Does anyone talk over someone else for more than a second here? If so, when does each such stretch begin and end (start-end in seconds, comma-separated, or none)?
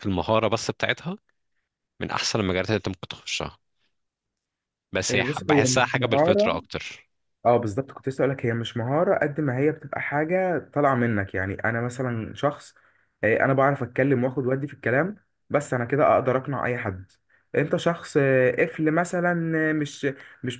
5.1-6.6